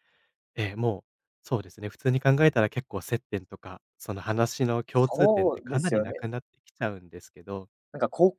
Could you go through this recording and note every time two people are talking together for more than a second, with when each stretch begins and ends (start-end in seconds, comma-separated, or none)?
4.9-6.2